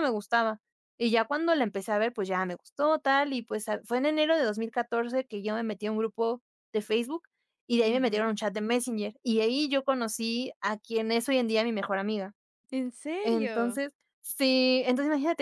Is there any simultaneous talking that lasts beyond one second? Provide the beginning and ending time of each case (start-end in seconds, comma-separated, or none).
none